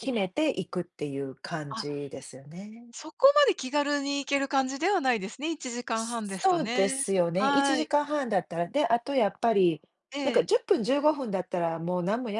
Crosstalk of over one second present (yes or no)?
yes